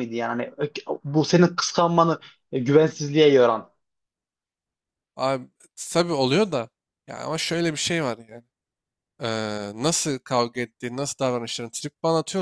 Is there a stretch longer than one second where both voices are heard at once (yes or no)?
no